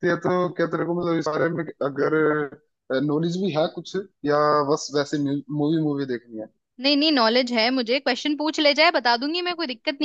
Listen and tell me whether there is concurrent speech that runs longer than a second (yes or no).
no